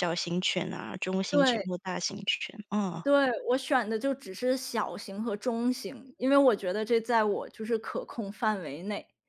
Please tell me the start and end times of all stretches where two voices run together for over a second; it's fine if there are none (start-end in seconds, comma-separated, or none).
none